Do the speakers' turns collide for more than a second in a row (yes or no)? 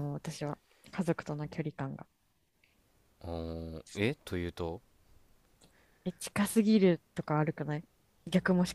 no